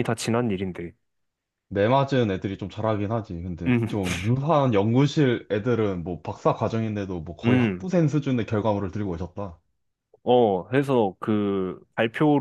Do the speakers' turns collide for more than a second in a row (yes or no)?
no